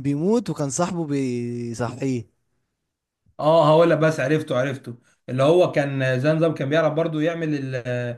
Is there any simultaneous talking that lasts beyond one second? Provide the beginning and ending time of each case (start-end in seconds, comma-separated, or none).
none